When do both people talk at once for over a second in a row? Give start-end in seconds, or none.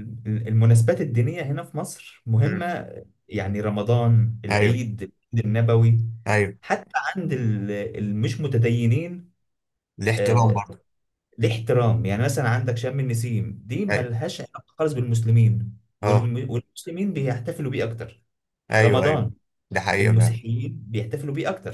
none